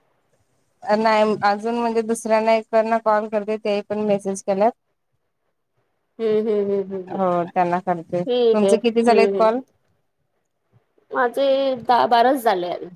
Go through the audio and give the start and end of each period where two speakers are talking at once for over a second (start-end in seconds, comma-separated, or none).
8.2-9.5